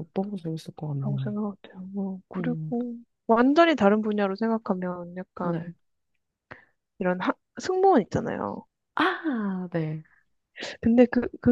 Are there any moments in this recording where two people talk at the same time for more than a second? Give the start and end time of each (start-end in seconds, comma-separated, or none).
none